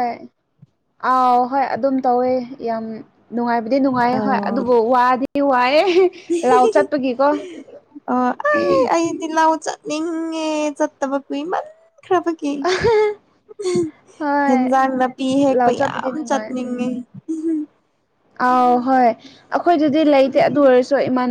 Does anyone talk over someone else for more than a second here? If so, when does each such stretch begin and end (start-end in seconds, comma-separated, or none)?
15.5-16.9